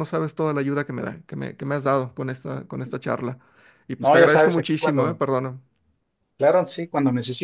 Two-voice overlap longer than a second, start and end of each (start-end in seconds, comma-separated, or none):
4.0-5.2